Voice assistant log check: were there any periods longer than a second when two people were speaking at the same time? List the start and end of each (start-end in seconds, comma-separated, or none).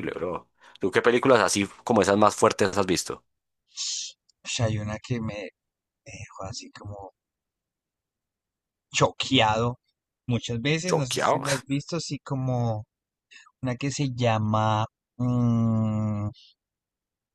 none